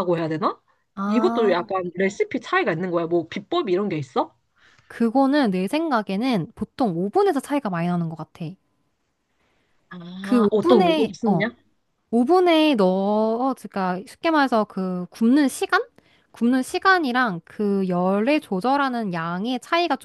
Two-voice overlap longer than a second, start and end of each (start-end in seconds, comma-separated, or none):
10.2-11.4